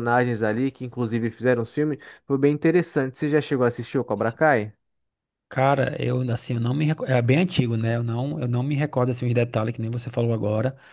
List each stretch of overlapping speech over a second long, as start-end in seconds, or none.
none